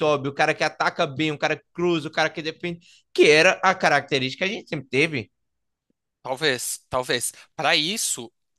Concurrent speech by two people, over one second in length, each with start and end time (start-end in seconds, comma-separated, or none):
none